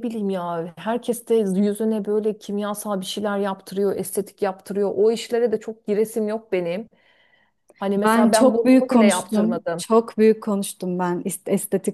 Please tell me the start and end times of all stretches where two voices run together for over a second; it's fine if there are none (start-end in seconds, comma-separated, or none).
8.0-9.8